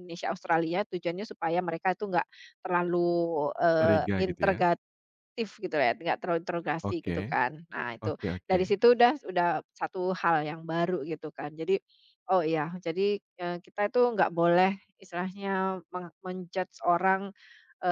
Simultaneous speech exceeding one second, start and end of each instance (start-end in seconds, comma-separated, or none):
none